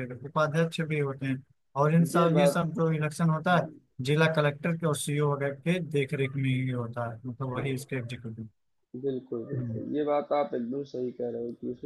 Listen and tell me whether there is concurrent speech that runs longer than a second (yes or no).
no